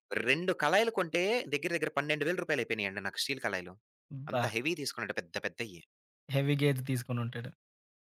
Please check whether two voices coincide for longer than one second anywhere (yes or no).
no